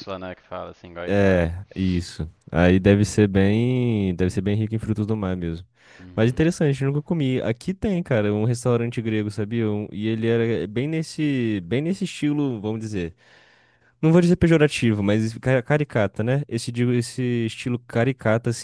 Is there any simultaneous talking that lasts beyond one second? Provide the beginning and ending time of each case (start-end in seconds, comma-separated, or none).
none